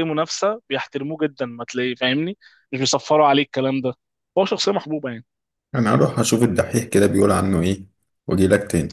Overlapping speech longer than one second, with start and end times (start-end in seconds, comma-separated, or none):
none